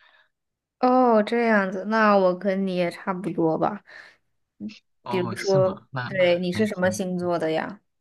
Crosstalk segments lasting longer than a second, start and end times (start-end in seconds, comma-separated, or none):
5.0-7.0